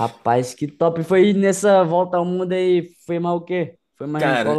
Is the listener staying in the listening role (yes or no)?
no